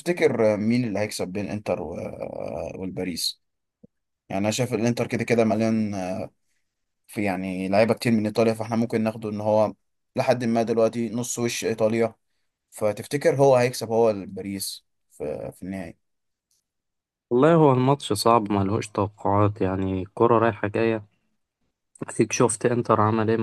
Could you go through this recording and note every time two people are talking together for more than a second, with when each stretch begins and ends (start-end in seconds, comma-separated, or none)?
none